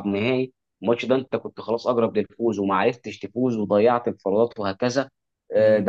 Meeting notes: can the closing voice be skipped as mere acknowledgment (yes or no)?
yes